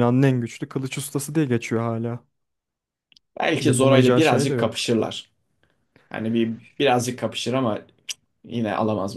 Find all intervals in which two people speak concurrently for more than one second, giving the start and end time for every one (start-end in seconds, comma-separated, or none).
3.6-4.9